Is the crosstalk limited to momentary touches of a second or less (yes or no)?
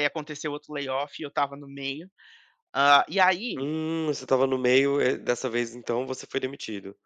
yes